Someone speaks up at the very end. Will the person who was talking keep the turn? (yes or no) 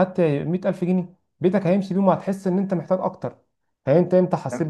yes